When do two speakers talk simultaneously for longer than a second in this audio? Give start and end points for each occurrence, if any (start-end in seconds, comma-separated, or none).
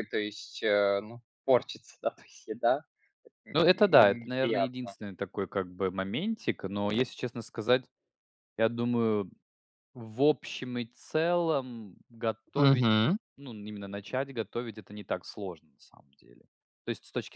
3.5-5.0